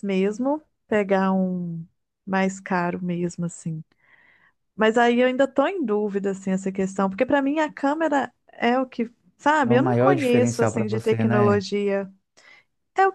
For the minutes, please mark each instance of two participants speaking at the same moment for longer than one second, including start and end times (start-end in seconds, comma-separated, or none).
9.6-11.7